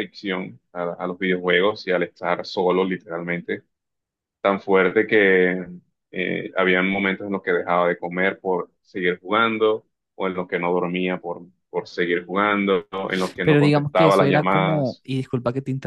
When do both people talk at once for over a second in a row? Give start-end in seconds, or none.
13.4-15.0